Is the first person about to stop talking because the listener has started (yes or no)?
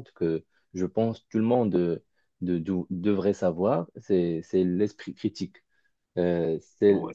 no